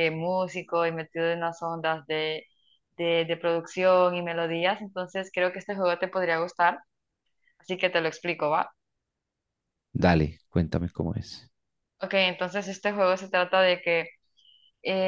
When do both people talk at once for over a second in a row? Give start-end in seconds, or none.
none